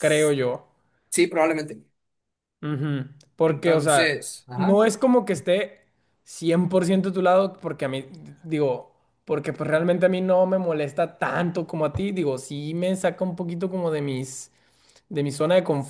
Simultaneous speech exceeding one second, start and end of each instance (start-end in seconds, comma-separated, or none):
3.5-4.8